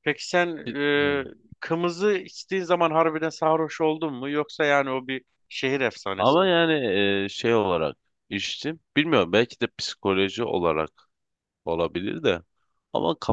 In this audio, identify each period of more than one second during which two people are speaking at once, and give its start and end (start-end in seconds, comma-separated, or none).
none